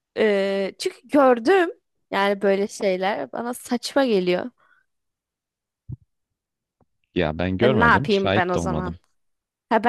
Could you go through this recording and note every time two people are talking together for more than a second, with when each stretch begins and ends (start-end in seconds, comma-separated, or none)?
7.6-8.9